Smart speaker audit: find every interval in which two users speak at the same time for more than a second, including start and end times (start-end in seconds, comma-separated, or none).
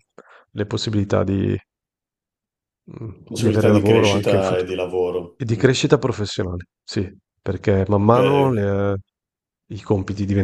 3.2-4.7